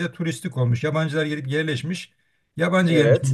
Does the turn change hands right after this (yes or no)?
no